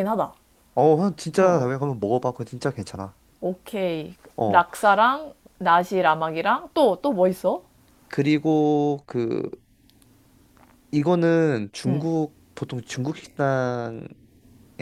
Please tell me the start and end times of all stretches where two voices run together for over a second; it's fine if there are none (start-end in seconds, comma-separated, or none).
none